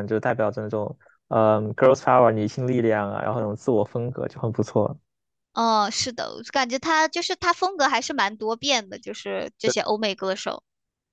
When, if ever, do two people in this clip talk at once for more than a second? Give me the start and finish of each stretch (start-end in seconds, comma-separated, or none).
none